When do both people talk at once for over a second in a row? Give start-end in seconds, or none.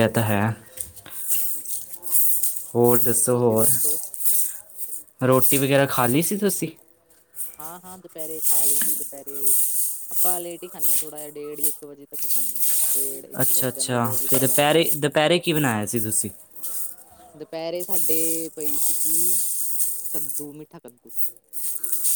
13.4-14.9